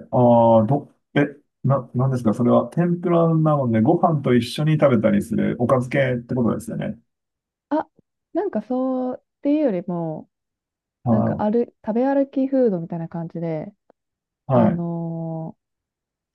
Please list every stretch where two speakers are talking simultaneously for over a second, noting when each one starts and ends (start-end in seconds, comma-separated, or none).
none